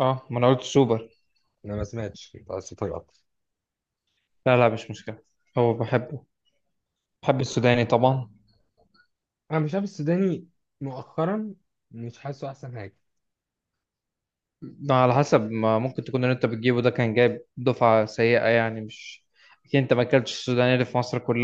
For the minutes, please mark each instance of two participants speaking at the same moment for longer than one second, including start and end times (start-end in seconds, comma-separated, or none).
none